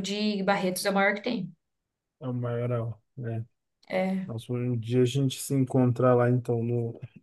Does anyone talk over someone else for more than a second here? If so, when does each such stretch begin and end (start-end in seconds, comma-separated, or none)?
none